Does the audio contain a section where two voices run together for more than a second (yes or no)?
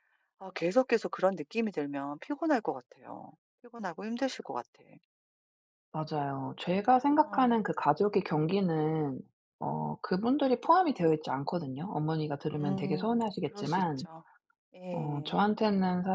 yes